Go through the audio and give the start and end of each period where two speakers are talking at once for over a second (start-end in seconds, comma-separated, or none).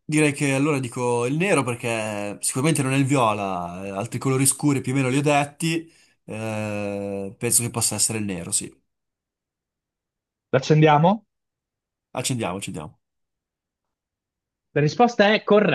none